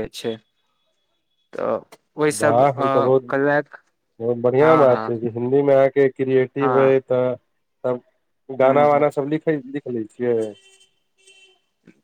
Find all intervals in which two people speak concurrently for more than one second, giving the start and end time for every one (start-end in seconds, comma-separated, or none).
2.4-3.8